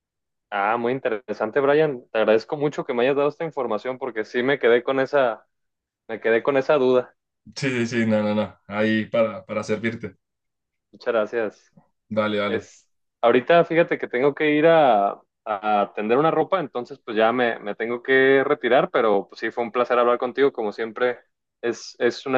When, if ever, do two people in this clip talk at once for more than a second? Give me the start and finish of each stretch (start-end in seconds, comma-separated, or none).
none